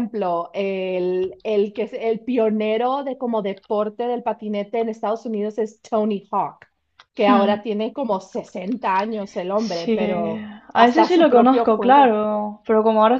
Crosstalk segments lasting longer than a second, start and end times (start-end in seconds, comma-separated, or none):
10.7-12.2